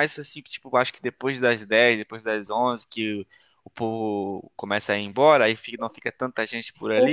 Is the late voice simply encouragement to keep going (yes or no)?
no